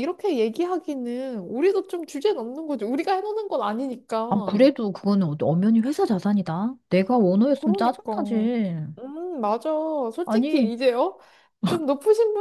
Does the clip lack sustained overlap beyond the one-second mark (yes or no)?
yes